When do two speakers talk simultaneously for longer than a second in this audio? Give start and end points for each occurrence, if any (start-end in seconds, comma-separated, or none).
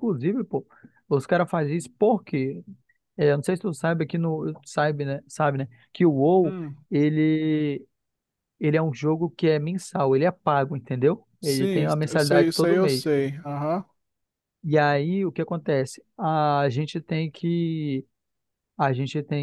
11.4-13.0